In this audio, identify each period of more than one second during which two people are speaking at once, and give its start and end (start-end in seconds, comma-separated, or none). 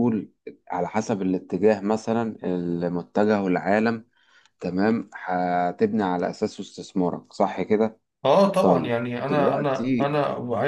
8.6-10.1